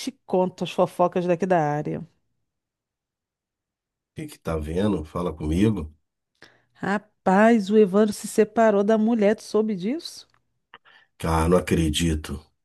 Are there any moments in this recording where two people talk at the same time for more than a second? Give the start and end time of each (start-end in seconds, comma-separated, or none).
none